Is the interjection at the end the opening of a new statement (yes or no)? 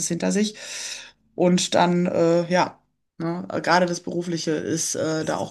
yes